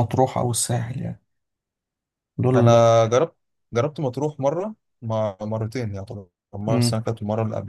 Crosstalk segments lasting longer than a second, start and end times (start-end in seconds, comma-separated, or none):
none